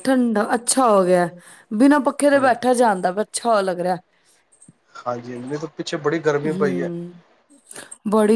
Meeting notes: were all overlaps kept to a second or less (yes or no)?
yes